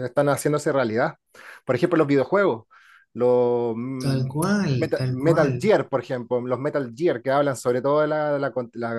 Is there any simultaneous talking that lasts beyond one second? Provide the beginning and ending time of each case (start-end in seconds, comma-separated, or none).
4.0-5.5